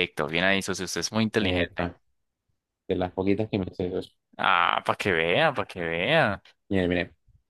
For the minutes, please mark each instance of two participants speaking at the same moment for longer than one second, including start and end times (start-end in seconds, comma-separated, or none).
none